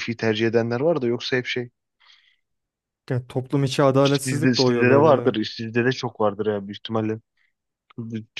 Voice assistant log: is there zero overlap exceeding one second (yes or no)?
no